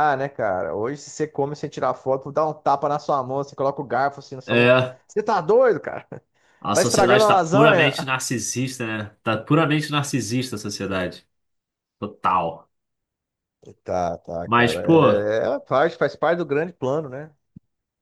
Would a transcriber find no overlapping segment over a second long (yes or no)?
no